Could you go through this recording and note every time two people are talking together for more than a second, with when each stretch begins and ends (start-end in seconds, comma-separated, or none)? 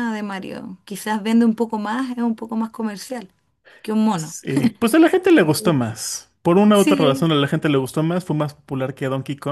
none